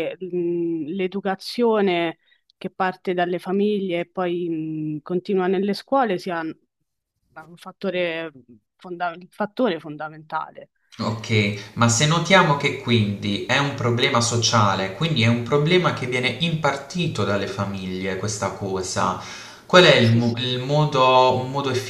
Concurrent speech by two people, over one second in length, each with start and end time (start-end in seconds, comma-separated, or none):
none